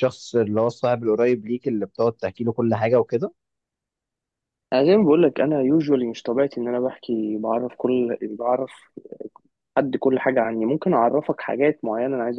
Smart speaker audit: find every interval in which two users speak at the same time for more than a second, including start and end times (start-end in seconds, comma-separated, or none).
none